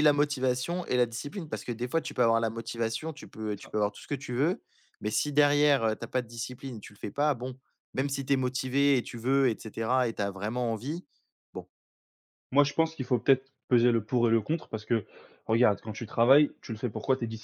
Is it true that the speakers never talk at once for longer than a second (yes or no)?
yes